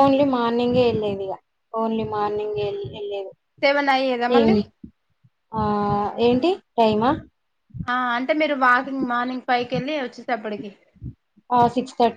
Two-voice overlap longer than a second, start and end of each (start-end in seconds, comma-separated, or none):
none